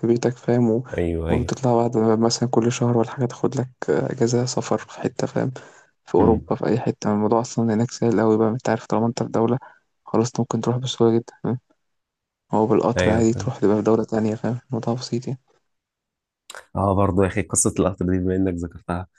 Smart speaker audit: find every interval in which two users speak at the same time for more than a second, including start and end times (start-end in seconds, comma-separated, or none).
none